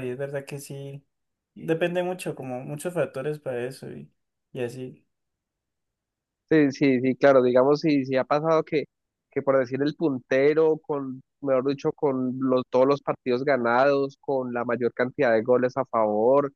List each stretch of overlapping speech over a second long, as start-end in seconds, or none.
none